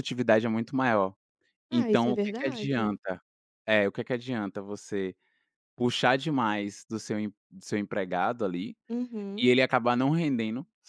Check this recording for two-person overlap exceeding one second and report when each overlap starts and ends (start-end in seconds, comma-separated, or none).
1.7-3.0